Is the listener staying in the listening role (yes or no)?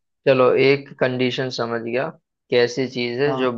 yes